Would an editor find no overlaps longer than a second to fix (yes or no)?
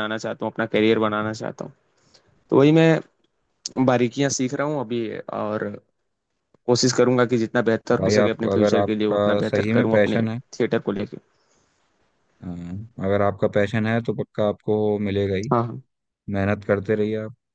no